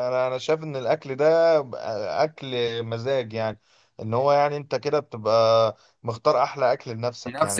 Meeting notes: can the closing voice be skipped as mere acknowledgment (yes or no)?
no